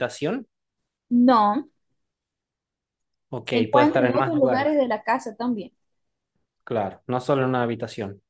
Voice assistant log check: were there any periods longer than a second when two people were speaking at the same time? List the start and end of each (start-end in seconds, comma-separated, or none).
3.4-4.8